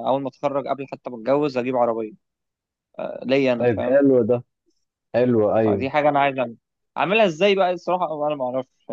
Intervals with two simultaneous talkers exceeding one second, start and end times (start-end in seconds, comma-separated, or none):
none